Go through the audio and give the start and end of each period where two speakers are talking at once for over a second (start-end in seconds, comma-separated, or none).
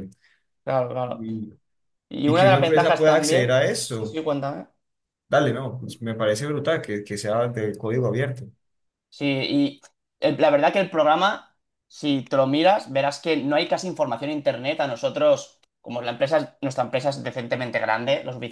2.2-4.2